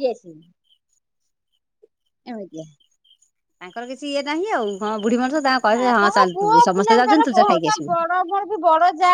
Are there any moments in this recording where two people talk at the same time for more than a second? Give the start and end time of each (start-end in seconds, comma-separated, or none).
5.7-7.9